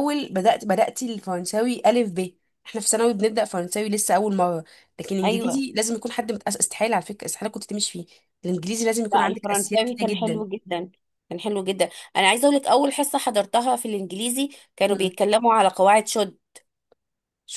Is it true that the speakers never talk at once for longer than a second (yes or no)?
no